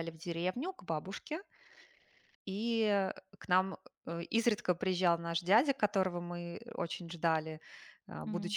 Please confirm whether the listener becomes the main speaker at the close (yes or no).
no